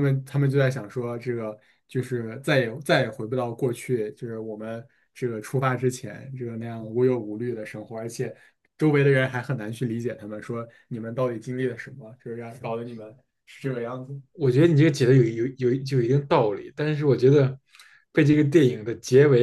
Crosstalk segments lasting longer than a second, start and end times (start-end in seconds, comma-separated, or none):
none